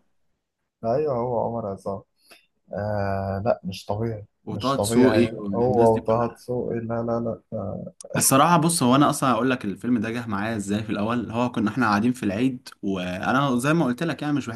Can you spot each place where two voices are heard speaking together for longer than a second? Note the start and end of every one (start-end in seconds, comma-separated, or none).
4.5-6.4